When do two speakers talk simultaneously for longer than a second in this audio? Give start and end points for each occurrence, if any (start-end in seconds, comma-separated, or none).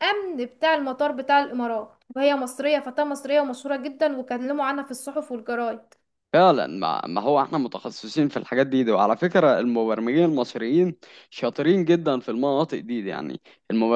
none